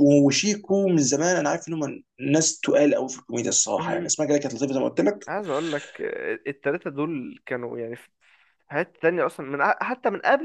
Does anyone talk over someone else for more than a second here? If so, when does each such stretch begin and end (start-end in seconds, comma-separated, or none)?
none